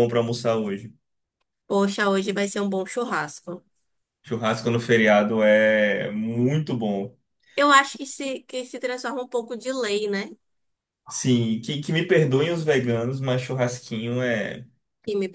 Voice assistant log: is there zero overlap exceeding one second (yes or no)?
yes